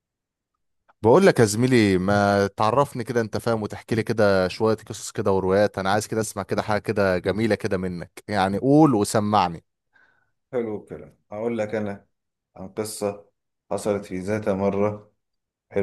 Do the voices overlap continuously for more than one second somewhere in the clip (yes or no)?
no